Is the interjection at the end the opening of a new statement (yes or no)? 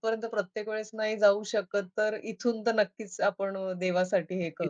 yes